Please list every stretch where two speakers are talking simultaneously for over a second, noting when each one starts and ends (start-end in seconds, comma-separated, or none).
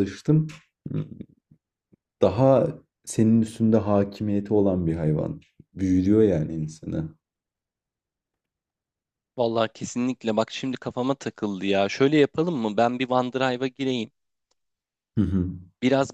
none